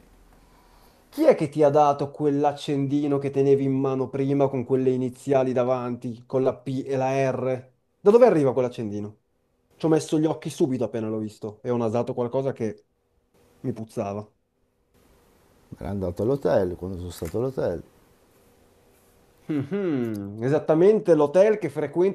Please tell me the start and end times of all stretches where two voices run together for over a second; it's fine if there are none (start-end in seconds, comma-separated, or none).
none